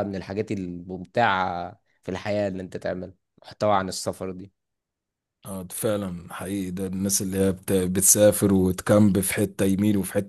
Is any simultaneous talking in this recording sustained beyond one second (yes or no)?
no